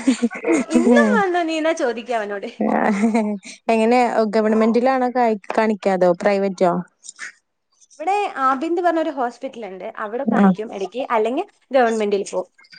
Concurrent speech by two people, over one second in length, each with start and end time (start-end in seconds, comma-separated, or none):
none